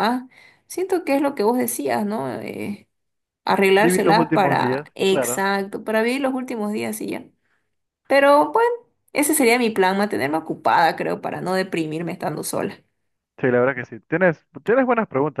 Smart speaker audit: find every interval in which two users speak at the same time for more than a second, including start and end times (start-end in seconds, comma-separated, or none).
3.8-5.4